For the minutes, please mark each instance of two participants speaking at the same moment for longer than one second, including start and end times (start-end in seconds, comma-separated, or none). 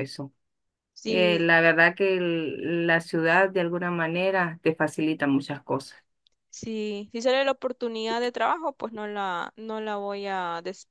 none